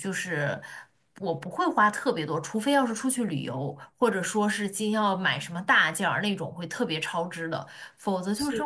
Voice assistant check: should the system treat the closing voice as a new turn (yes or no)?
no